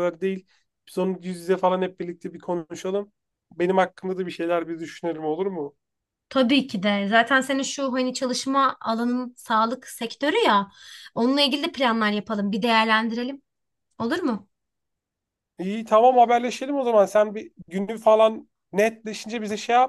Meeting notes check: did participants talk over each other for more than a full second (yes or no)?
no